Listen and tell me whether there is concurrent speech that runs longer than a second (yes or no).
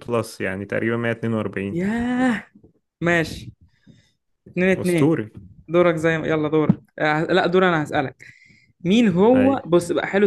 no